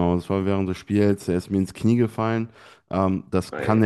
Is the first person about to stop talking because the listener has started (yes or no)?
no